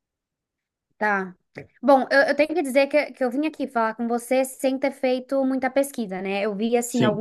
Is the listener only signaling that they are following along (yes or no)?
yes